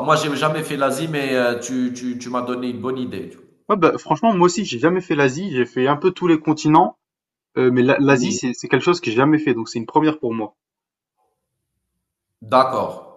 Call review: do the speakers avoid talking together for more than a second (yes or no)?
yes